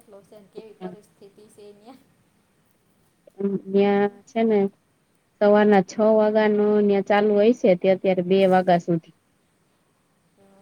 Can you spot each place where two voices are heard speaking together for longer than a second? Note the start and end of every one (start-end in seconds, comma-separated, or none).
none